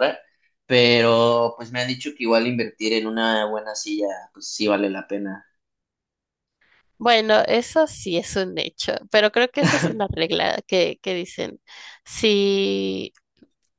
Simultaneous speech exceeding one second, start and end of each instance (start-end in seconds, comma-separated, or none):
none